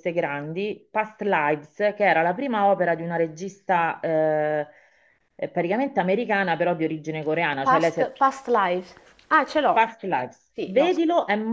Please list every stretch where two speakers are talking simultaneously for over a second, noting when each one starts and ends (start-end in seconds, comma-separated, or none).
none